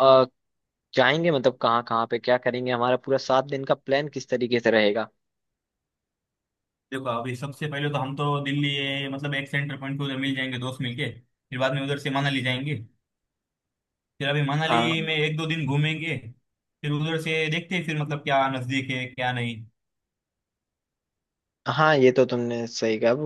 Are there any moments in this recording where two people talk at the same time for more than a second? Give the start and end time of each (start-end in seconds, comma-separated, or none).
none